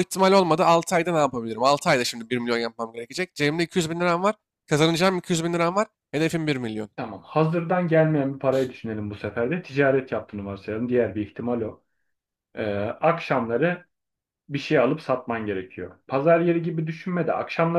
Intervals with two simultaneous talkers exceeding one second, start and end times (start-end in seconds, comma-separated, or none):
none